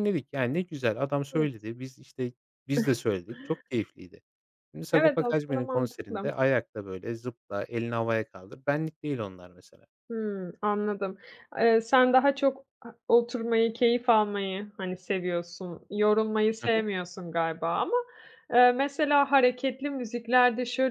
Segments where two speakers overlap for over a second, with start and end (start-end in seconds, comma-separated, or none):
4.9-6.3